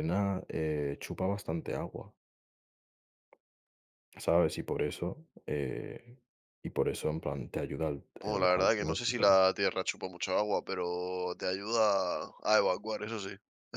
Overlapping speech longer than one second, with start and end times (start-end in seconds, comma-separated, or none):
8.2-9.4